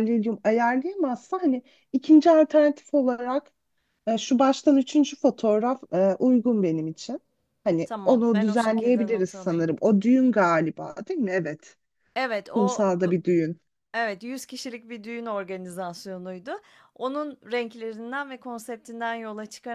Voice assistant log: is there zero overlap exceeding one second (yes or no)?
no